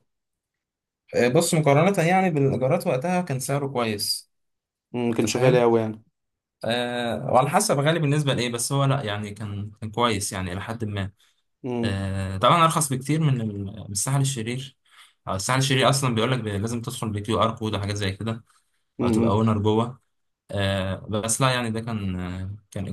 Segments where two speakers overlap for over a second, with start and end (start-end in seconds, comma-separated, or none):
none